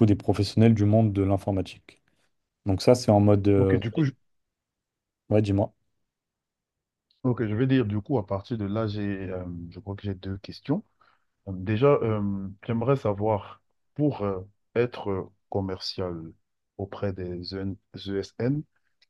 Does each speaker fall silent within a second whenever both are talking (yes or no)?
yes